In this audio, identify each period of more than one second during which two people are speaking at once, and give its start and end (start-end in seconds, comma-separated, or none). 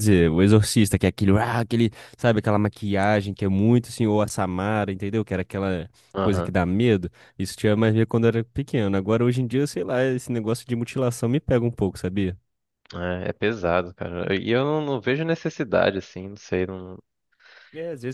none